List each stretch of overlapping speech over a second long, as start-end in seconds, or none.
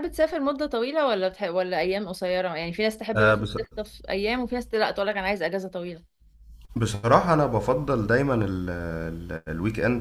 none